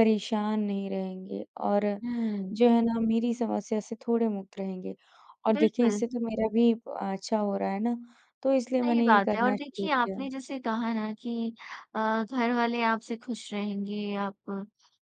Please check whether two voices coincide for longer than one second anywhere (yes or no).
yes